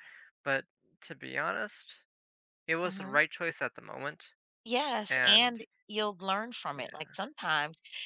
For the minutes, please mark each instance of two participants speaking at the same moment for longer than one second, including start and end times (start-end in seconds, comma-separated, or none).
none